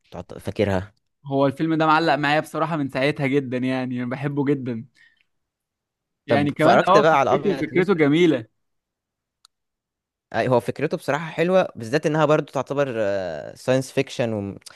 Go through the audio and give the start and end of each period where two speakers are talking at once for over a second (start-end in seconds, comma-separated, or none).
6.3-7.9